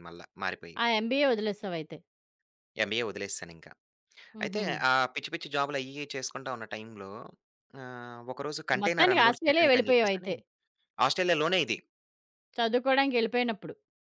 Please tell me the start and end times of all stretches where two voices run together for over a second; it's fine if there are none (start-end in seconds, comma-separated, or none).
8.8-10.3